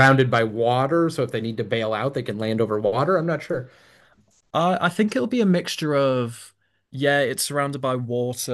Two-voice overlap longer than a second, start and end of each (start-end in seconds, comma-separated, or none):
none